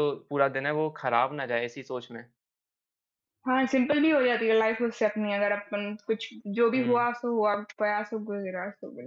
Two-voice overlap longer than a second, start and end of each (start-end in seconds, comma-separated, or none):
none